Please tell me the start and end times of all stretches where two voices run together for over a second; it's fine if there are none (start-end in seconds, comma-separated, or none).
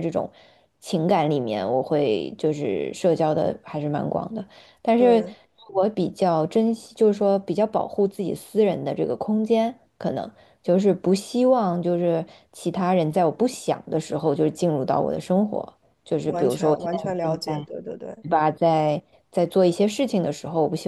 16.2-17.7